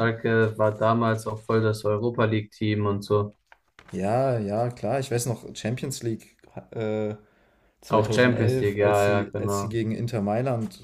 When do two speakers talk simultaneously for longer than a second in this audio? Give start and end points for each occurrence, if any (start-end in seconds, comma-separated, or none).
7.9-9.8